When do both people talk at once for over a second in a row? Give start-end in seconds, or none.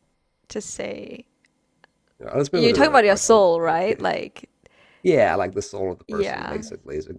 2.5-3.8